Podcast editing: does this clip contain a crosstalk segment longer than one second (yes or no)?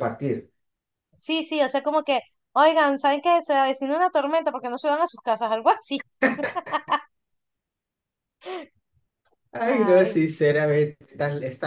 no